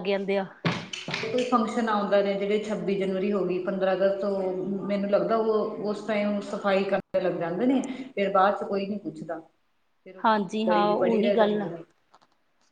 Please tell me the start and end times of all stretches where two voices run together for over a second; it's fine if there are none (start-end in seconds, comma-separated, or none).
10.2-11.7